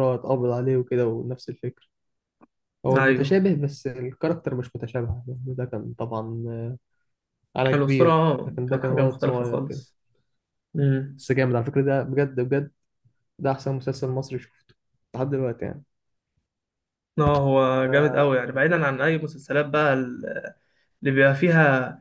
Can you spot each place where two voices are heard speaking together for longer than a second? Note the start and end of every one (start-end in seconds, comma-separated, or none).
7.7-9.8